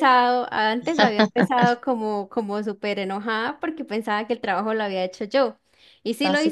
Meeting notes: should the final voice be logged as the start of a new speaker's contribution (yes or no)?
no